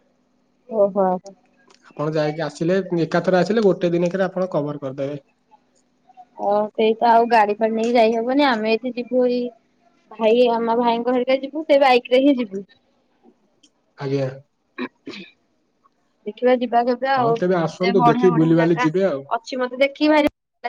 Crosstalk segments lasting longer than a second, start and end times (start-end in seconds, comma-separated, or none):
17.2-18.9